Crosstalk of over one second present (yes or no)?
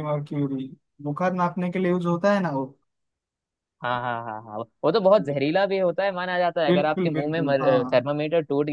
yes